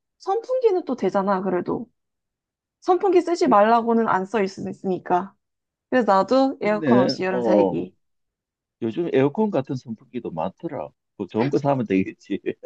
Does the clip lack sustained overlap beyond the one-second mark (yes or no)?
no